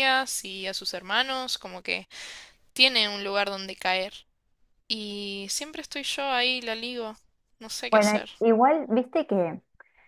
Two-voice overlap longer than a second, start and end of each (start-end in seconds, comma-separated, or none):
none